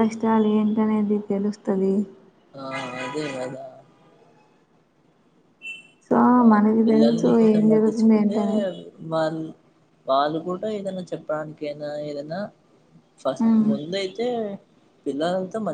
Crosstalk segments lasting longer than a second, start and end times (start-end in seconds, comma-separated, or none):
6.8-8.4